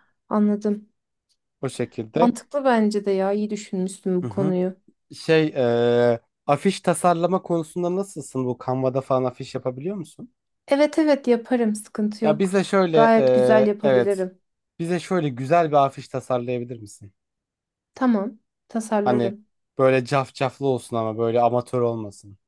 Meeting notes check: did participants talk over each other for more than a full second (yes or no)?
yes